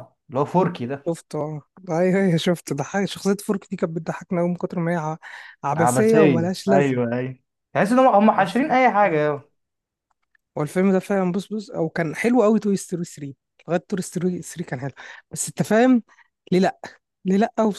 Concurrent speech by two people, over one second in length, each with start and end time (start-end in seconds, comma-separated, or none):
5.8-7.0